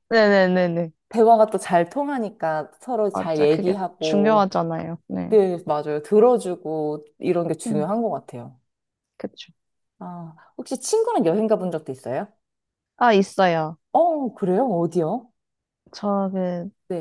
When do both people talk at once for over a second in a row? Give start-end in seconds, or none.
3.1-4.5